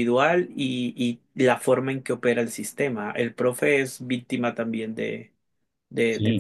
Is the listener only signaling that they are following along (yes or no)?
no